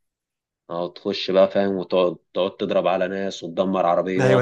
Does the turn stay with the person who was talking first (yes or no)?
no